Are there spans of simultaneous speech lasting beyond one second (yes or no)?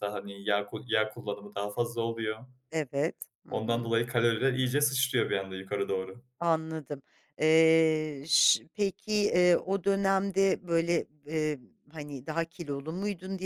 no